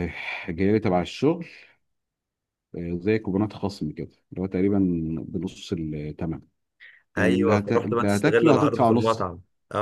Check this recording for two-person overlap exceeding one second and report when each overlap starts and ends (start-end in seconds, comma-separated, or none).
7.2-9.3